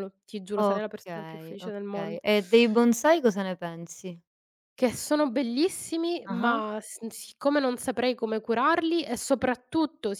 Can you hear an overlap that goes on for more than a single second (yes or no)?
yes